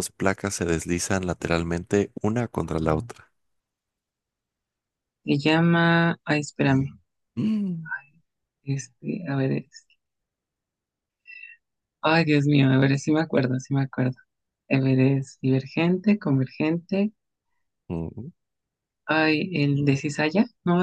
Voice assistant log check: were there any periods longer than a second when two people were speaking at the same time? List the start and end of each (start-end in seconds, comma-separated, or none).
none